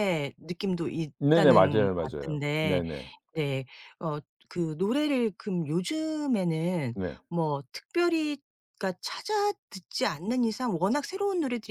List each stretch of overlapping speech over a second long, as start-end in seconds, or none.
1.2-2.8